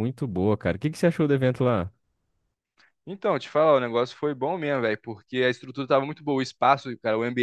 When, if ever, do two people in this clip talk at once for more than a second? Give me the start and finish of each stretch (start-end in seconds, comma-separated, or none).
none